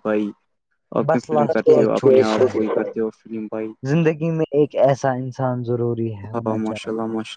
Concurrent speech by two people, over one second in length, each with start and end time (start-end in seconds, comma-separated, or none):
1.1-2.6